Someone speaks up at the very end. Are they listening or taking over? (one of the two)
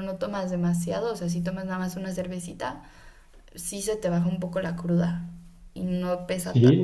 taking over